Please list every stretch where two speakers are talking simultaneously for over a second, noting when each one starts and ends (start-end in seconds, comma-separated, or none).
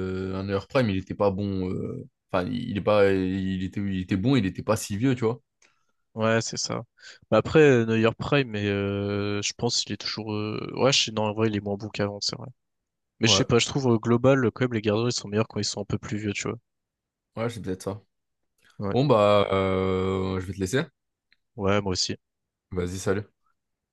none